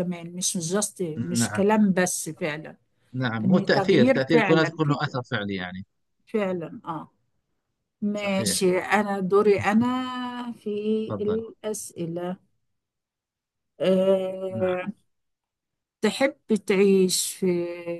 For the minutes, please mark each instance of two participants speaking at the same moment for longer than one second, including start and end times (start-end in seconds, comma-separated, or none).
3.4-5.2